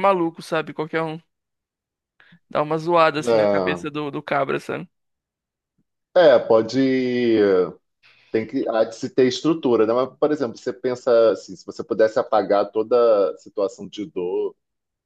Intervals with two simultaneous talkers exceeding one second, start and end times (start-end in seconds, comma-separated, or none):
none